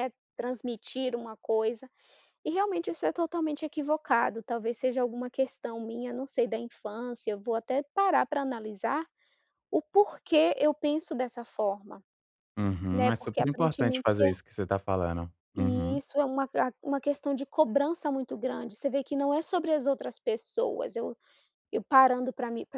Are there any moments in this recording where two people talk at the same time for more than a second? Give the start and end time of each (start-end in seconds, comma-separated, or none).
12.9-14.3